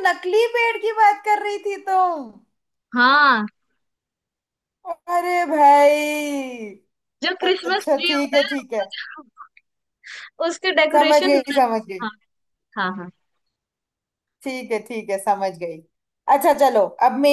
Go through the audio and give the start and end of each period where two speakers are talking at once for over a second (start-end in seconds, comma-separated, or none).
7.5-8.8